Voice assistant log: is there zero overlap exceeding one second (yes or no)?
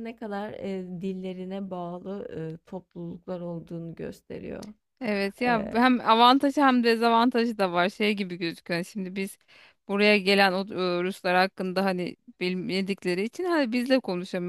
yes